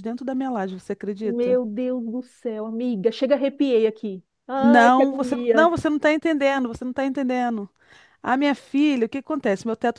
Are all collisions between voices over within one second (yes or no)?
no